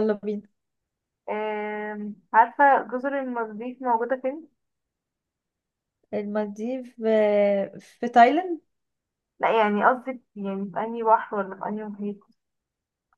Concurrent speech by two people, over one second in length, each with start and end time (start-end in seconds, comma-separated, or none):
none